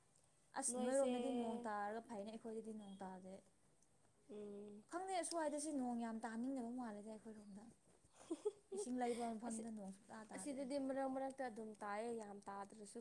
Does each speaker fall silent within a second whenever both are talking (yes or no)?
yes